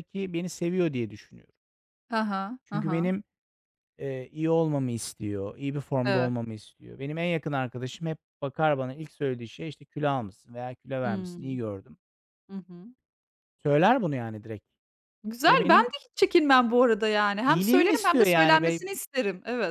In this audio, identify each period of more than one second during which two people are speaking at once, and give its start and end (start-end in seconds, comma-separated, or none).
17.4-18.8